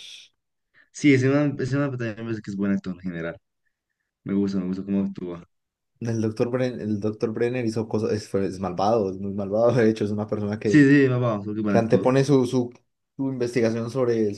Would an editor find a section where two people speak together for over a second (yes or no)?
no